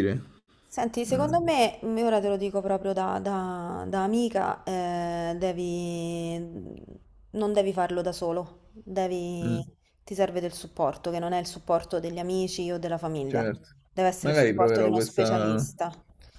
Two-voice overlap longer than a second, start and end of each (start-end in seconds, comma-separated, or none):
14.2-15.7